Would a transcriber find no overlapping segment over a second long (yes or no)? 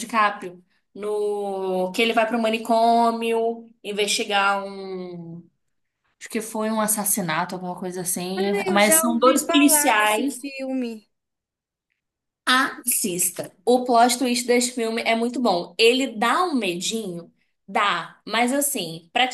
no